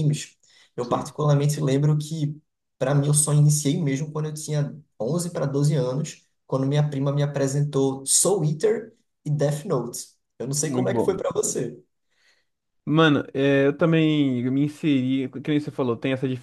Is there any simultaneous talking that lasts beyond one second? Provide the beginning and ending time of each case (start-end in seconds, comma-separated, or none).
none